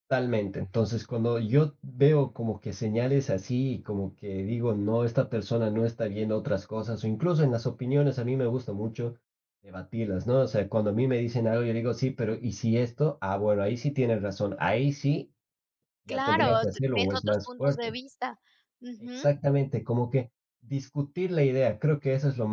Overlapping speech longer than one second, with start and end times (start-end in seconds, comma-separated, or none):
16.1-18.0